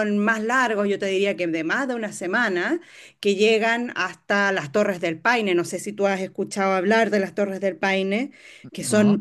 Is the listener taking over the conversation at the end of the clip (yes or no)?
no